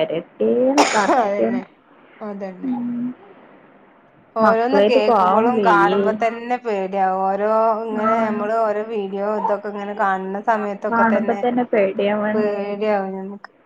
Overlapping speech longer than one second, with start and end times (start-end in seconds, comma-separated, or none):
4.4-6.0